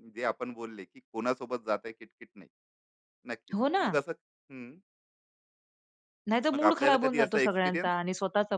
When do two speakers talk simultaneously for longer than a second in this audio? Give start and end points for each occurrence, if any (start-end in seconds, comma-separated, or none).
6.5-7.9